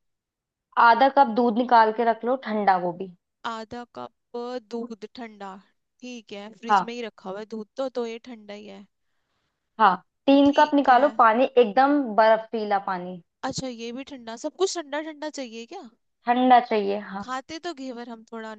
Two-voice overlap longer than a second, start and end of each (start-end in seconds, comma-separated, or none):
none